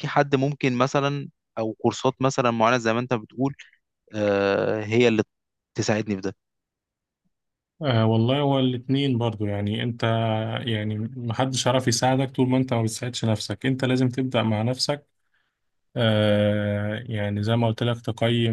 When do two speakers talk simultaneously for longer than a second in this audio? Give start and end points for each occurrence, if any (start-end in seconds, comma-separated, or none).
none